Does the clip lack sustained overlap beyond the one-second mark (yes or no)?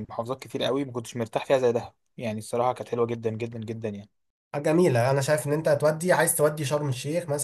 yes